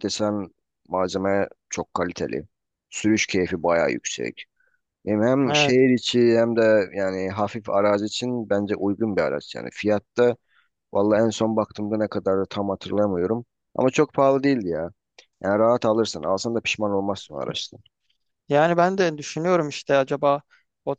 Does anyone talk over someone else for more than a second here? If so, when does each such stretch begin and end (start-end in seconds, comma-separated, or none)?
none